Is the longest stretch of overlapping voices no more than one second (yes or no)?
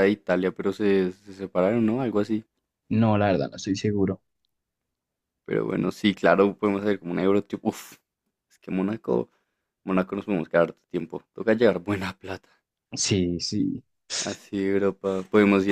yes